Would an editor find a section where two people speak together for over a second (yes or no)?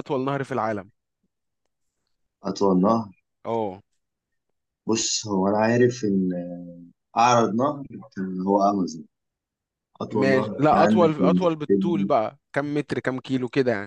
yes